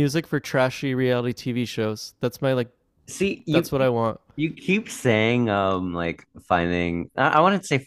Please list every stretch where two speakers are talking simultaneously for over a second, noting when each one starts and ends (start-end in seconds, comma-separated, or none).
none